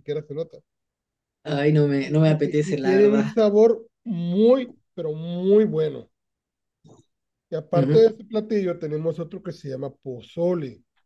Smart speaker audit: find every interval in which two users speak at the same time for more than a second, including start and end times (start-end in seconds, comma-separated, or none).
2.0-3.2